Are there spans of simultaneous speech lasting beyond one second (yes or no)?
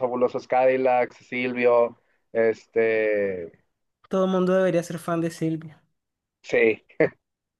no